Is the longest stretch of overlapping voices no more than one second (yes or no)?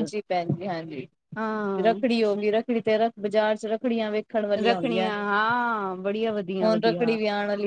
yes